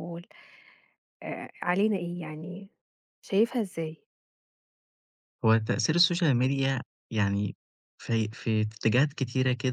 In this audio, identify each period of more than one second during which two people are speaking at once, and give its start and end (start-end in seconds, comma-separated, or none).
none